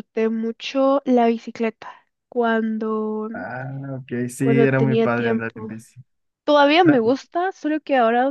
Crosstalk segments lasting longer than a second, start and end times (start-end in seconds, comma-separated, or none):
4.4-5.8